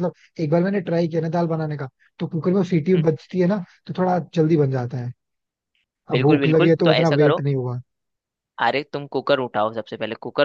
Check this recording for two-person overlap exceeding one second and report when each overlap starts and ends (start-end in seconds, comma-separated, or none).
6.1-7.4